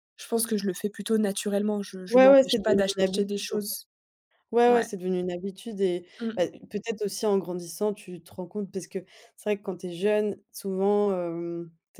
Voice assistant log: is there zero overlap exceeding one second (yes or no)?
no